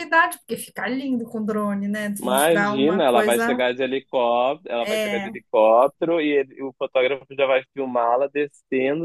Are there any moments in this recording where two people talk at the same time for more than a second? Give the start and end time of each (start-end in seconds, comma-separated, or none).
2.2-3.6